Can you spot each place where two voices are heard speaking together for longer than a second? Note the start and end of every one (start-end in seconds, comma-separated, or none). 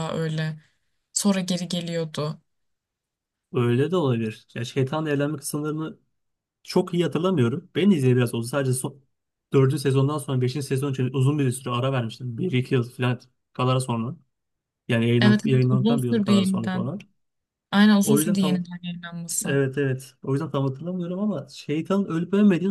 15.2-16.9